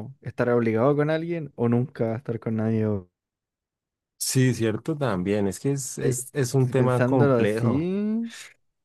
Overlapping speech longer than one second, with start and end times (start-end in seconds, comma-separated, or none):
6.6-7.9